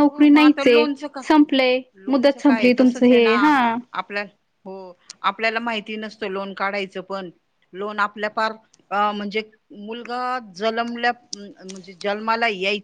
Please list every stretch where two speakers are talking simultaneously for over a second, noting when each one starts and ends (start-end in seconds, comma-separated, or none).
2.1-3.3